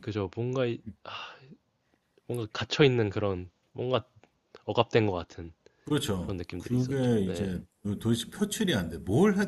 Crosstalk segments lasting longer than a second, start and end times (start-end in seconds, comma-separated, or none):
6.2-7.5